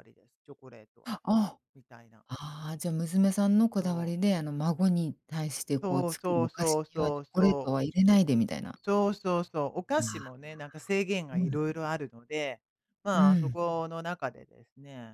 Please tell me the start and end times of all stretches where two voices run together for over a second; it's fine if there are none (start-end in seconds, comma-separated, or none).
5.8-7.8